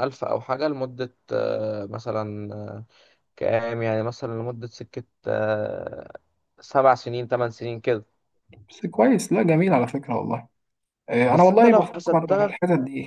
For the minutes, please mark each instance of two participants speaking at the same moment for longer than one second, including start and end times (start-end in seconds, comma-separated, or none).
11.3-12.6